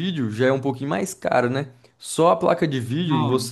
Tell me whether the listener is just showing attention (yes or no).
yes